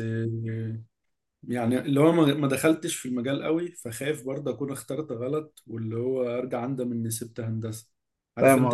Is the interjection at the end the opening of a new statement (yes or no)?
yes